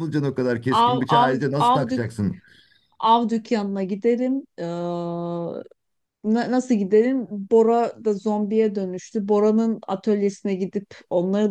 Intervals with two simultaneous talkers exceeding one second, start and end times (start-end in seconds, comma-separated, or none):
0.7-2.1